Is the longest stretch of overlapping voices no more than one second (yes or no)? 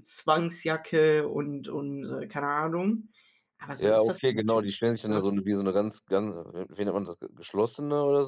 no